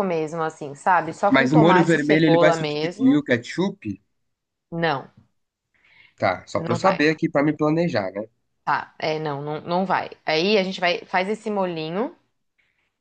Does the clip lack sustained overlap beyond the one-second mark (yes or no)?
no